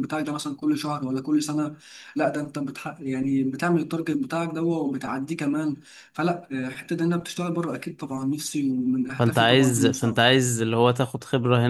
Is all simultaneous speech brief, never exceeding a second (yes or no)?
no